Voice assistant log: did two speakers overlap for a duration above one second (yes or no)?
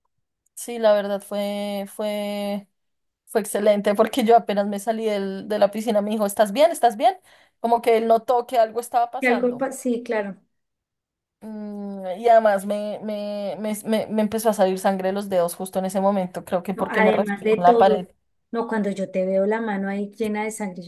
yes